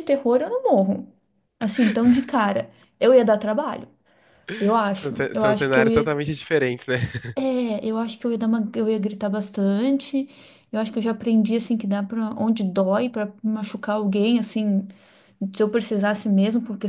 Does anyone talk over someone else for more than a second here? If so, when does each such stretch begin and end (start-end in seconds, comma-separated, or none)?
4.8-6.1